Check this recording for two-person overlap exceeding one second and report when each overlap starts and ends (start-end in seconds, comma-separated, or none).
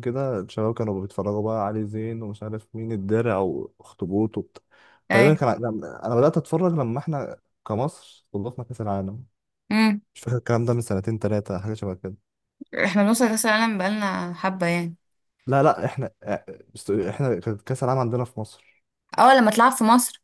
none